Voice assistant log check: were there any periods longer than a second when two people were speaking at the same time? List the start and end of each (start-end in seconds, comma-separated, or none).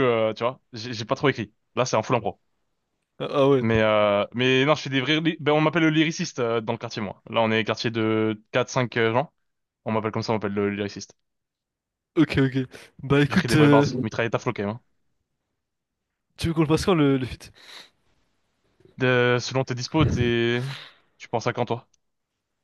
none